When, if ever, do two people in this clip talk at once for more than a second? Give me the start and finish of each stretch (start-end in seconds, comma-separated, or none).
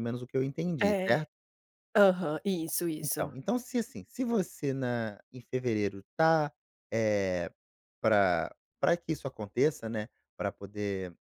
none